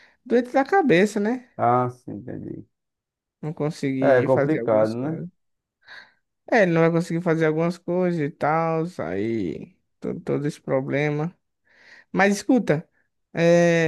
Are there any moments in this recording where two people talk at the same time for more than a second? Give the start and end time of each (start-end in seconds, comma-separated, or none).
4.0-5.2